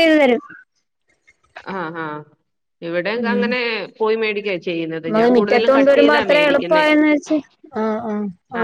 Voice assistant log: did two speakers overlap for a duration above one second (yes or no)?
yes